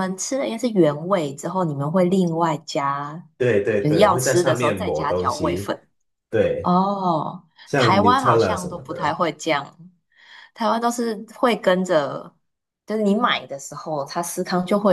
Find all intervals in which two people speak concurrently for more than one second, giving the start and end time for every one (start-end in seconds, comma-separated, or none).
3.8-5.7, 7.7-9.2